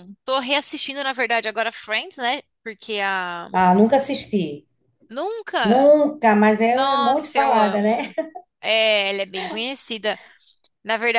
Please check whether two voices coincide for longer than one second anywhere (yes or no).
yes